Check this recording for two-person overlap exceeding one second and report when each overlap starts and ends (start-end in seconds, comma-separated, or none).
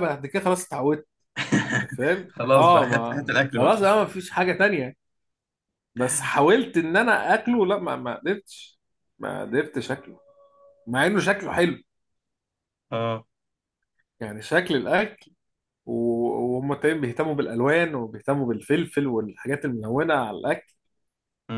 2.3-3.7